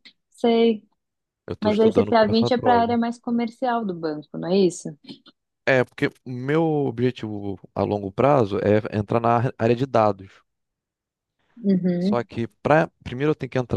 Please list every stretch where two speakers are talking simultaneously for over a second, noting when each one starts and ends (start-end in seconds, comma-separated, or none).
1.6-3.0